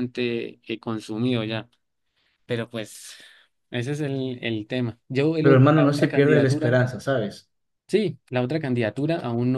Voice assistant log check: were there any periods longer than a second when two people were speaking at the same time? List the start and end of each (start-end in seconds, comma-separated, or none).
5.4-6.8